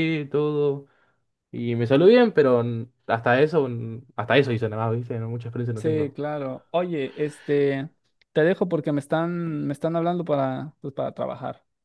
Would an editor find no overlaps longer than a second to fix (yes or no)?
yes